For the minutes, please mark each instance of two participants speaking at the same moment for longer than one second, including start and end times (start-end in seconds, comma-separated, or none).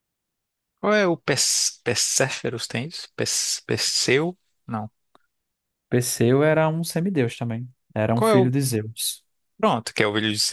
none